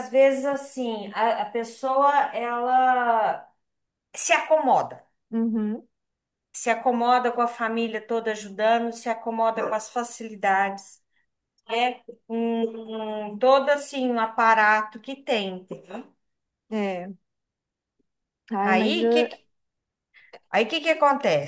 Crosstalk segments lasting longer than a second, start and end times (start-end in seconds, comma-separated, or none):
none